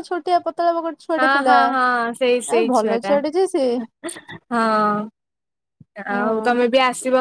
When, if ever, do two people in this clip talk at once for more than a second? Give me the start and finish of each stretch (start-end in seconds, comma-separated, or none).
none